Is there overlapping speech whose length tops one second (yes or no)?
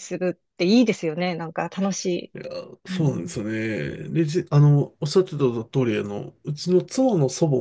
no